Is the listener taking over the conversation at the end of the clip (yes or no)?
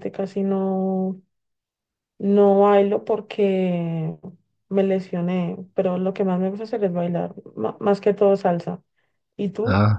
yes